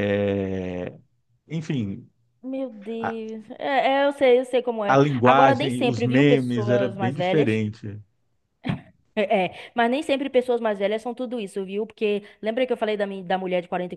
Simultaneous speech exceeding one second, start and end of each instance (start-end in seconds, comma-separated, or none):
4.9-7.6